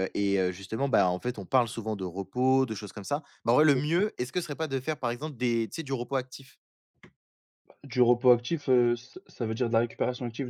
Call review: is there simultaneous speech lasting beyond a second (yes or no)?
no